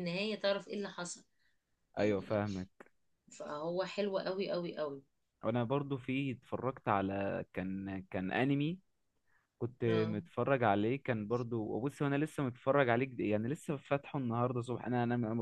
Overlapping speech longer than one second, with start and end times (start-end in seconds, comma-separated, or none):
none